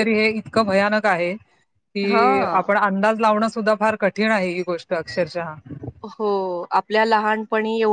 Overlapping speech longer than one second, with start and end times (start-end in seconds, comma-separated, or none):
none